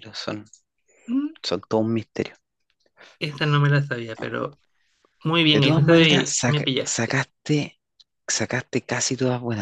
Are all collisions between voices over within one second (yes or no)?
no